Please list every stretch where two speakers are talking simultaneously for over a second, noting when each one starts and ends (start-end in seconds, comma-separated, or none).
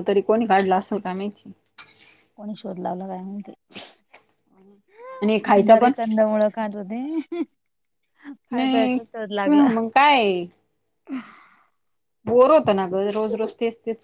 none